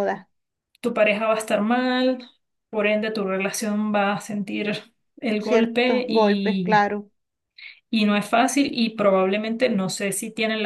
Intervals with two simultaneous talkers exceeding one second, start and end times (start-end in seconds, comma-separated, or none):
5.4-6.8